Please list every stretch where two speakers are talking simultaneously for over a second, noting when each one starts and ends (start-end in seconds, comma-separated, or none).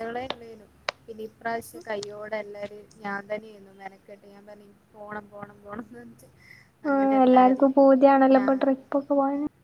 none